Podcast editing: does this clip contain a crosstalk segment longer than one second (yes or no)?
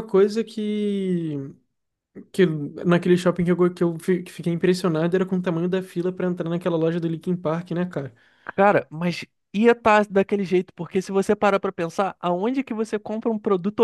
no